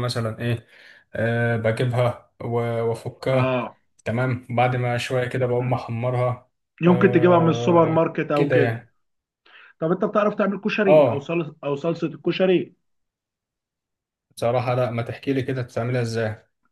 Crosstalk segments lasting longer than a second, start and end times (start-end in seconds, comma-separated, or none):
6.9-8.9